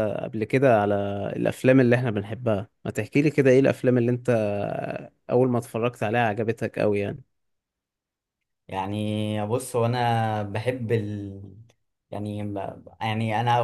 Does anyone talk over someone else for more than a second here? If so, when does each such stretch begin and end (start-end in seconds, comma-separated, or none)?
none